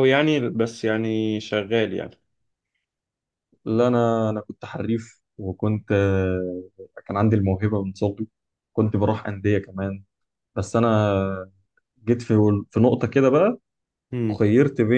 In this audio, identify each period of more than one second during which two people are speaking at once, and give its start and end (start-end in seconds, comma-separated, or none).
none